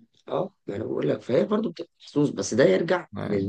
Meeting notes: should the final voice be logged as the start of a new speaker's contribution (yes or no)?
no